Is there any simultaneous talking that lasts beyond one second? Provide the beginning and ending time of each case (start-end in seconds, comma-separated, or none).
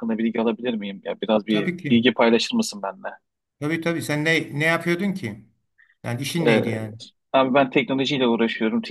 none